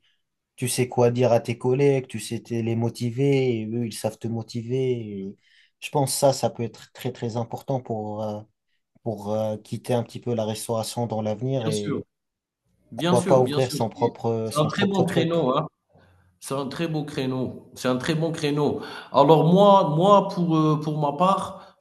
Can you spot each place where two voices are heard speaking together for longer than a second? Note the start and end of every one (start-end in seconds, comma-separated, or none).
12.9-15.3